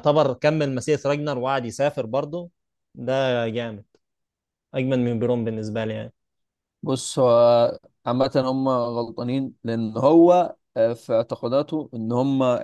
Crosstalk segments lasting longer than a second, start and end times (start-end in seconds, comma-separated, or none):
none